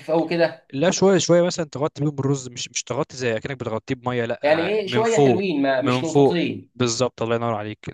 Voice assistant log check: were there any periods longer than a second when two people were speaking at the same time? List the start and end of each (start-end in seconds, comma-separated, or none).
4.4-6.7